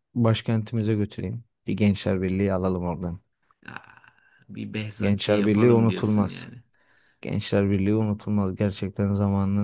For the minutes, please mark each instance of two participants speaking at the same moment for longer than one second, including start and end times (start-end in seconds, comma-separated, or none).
5.0-6.5